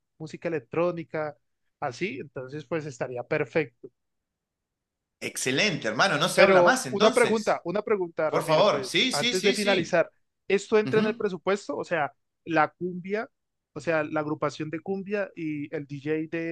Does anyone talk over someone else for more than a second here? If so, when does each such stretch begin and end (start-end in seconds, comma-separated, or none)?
6.3-7.6, 8.3-10.0